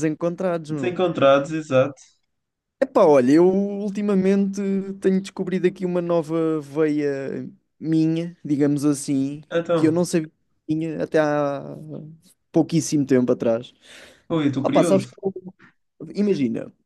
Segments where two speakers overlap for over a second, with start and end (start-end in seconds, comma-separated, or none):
none